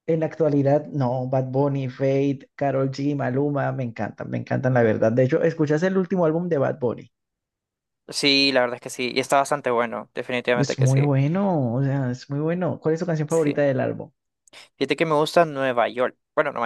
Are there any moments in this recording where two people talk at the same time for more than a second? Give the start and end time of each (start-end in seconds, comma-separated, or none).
none